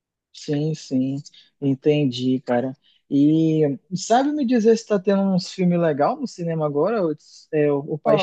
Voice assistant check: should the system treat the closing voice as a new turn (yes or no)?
yes